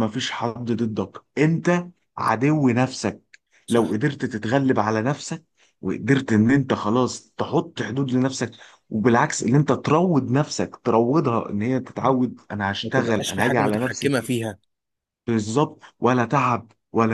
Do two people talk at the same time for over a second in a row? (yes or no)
yes